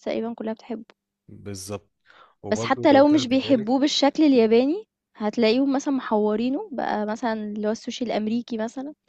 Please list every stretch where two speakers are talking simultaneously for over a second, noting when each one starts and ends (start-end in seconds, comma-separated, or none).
2.5-3.8